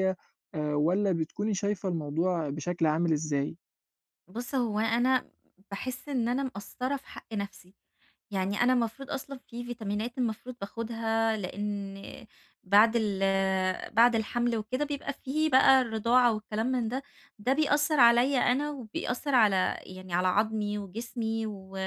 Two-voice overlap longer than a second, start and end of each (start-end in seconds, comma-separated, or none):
none